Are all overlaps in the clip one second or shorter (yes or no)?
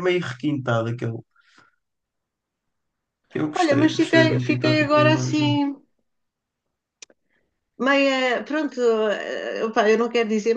no